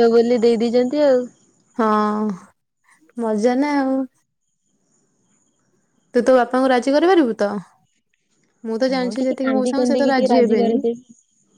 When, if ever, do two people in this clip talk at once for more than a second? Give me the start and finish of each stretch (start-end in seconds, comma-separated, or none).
8.9-10.8